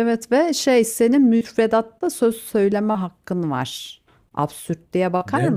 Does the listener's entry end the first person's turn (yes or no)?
yes